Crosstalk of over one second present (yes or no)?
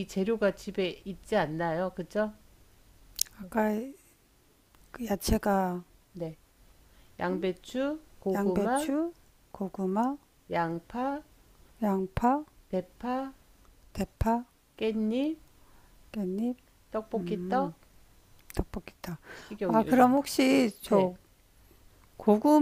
no